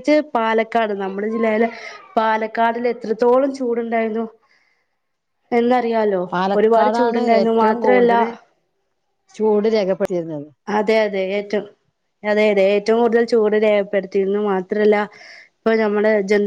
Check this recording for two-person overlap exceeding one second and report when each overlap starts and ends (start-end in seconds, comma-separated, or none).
6.6-8.1